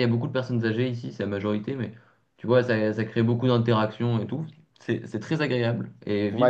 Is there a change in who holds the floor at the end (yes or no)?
yes